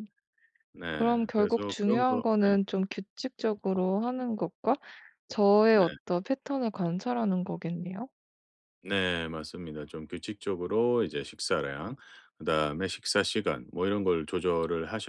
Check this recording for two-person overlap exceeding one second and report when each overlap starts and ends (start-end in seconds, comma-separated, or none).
0.9-2.6